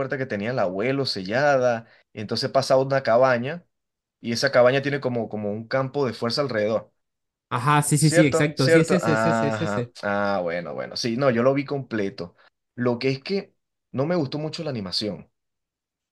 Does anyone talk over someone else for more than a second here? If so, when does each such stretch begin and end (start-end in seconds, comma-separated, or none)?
8.0-9.9